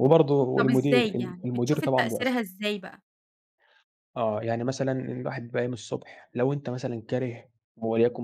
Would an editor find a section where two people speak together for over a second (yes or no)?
yes